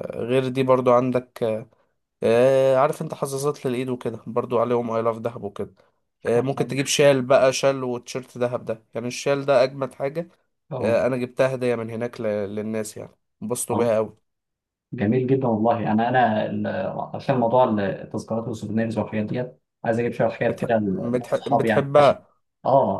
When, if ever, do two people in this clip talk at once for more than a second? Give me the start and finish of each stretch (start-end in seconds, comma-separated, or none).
20.5-22.2